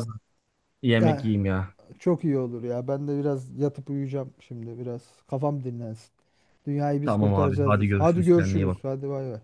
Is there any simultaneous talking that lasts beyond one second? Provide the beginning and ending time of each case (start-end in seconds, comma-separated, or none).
7.0-8.8